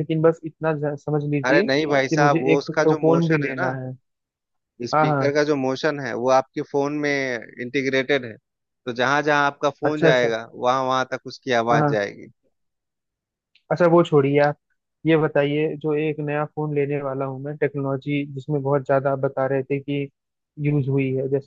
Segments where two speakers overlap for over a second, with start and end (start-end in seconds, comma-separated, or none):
1.5-3.7